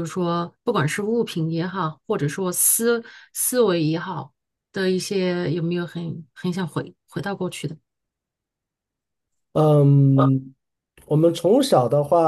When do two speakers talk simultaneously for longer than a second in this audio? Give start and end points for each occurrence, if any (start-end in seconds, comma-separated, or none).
none